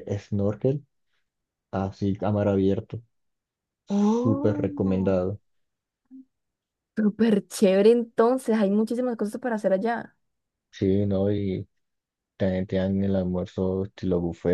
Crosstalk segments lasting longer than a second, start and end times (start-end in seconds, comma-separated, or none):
3.9-5.3